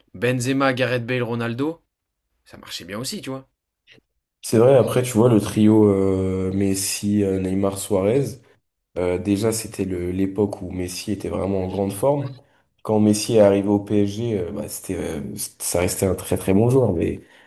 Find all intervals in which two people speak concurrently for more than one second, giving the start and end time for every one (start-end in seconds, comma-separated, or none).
none